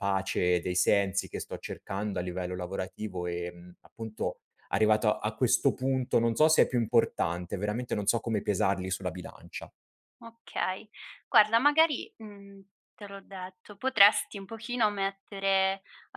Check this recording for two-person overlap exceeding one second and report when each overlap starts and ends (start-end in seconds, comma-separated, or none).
none